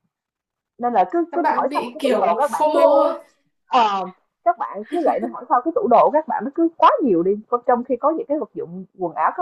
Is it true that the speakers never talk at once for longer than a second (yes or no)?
no